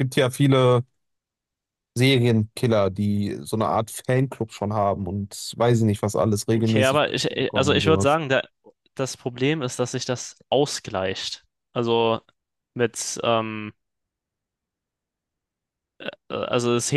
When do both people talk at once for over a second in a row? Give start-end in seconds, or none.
6.5-8.2